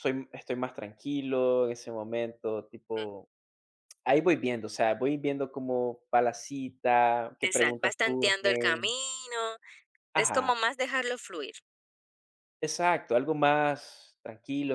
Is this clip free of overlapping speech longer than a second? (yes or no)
no